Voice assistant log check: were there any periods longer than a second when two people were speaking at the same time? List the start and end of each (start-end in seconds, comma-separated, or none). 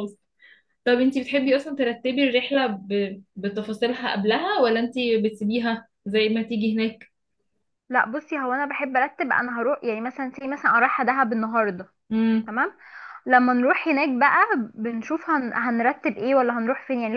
none